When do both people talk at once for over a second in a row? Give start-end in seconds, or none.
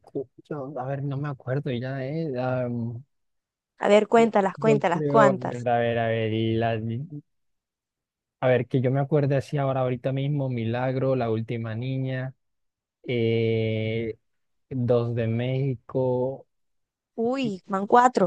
4.2-5.7